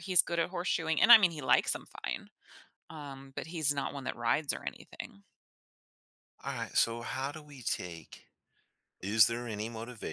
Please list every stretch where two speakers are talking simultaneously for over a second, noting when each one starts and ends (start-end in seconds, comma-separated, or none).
none